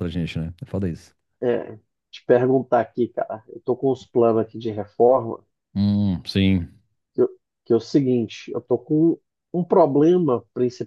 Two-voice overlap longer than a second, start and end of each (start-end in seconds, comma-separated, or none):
none